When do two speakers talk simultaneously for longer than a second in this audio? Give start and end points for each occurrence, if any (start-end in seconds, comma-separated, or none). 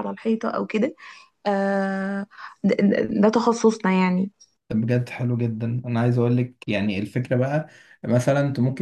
none